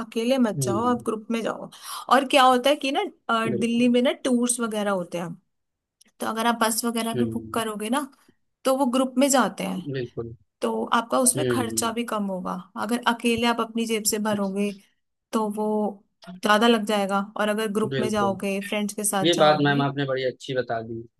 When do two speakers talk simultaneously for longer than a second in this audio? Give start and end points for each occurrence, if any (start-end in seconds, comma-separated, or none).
none